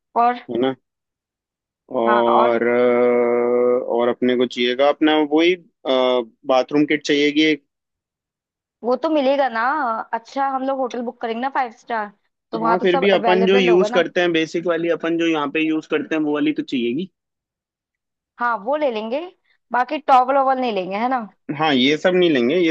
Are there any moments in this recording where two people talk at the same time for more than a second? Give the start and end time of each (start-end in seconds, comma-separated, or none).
12.6-14.1